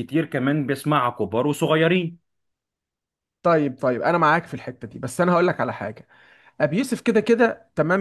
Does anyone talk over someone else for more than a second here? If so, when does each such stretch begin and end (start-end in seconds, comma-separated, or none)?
none